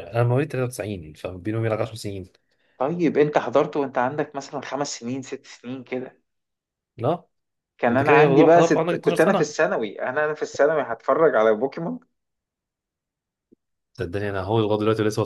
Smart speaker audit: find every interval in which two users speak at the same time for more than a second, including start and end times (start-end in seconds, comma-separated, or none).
7.9-9.5